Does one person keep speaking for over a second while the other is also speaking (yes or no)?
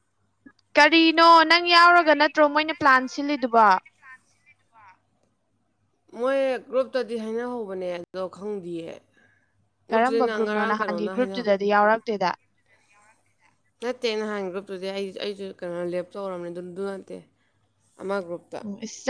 yes